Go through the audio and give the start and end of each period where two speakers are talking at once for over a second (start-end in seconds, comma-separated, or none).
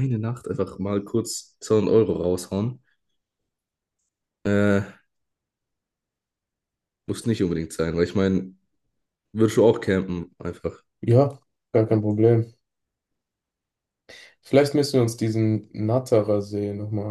none